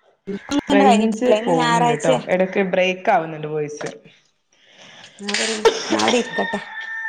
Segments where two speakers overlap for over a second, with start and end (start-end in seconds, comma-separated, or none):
0.7-2.2